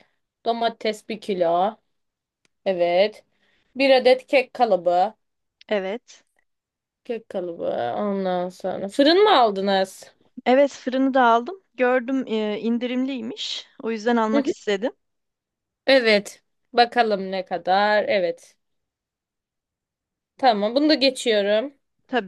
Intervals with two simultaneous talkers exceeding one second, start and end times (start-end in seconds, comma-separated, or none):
none